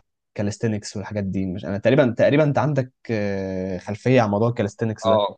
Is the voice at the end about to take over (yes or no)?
yes